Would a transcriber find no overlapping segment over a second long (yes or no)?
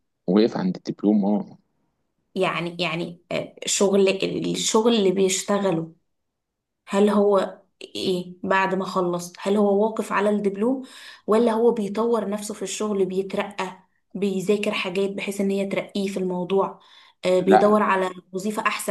yes